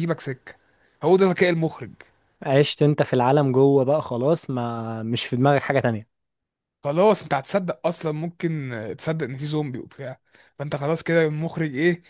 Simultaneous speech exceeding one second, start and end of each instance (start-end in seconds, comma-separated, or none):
none